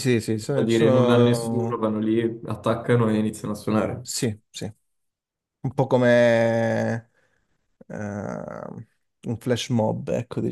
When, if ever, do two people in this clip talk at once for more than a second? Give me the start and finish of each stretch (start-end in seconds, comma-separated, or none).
0.5-1.8